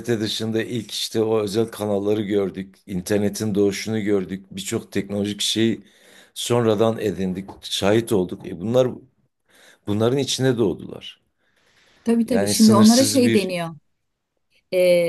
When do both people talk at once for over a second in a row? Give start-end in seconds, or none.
12.2-13.5